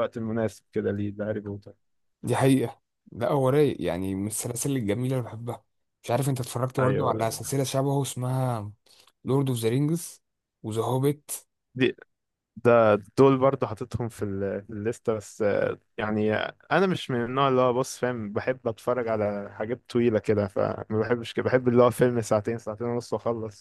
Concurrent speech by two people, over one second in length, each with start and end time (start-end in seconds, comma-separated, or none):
none